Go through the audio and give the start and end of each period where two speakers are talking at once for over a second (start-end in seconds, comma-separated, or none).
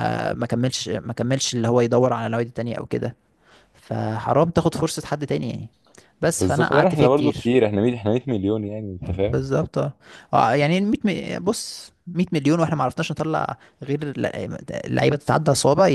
6.3-7.5